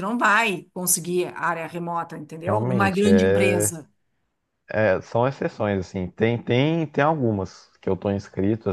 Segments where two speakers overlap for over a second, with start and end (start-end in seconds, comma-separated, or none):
2.4-3.7